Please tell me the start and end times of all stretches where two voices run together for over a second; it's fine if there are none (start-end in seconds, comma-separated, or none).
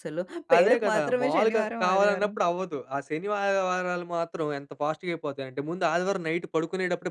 0.6-2.3